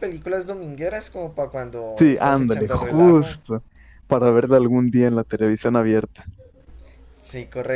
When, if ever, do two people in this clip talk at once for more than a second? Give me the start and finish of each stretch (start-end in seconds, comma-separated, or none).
2.0-3.3